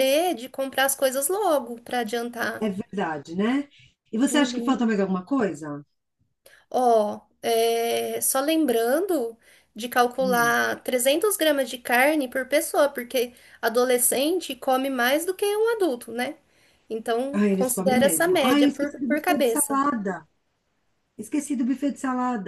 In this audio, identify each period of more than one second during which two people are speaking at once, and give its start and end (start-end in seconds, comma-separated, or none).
17.3-19.8